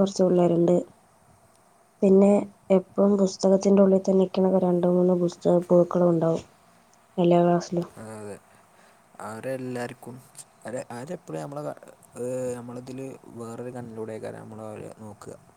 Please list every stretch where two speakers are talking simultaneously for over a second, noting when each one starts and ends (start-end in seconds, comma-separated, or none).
none